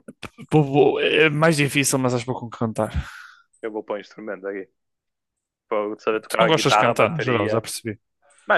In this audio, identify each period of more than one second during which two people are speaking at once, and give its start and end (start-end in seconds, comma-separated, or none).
6.3-7.6